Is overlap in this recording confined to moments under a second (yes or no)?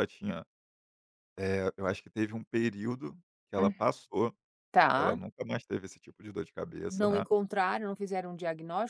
yes